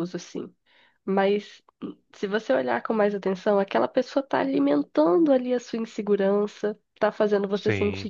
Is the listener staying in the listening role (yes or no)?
yes